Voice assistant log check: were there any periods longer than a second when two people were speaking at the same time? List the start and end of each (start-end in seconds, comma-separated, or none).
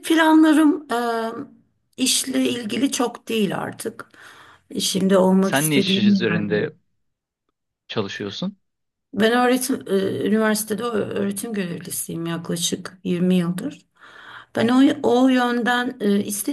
5.4-6.7